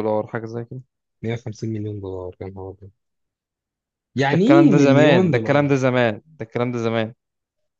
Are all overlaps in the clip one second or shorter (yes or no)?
no